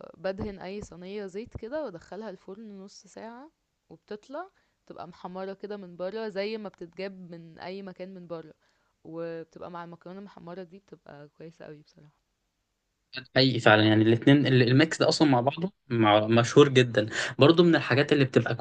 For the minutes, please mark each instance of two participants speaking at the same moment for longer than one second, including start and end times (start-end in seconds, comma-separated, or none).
none